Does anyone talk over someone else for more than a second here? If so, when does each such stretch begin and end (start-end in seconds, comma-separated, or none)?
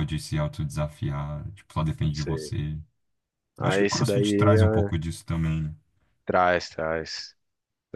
3.6-4.9